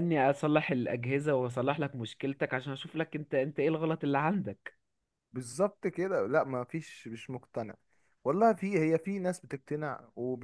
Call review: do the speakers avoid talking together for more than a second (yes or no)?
yes